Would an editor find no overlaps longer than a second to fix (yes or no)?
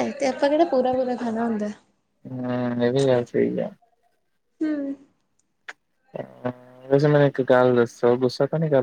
yes